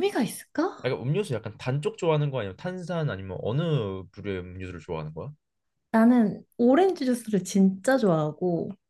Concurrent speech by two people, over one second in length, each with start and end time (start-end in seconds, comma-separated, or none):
none